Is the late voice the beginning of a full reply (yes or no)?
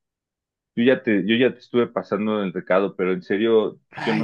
yes